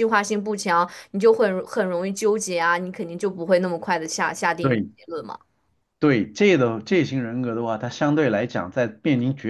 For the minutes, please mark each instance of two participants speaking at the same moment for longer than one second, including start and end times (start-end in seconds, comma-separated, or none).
none